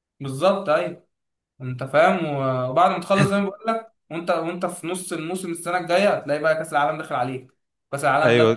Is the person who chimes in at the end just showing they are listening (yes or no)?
no